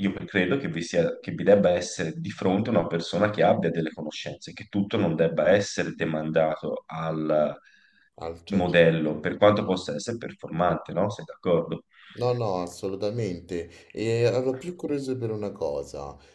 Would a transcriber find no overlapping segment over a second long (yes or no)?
yes